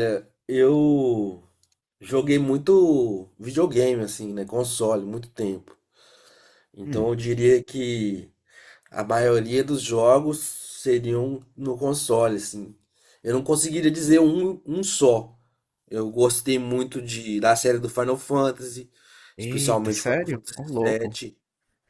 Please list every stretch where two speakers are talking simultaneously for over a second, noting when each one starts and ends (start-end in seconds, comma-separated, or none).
19.4-21.2